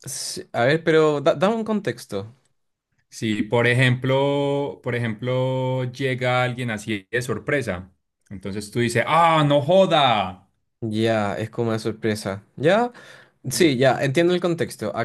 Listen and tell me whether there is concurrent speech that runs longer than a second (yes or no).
no